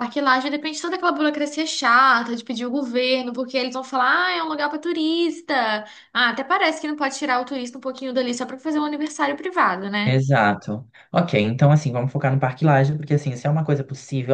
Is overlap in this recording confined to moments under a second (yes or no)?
yes